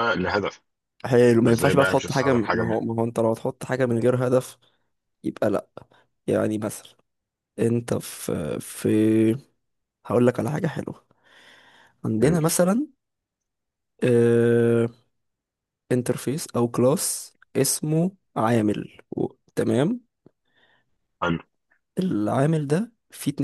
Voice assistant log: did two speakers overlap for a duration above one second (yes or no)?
yes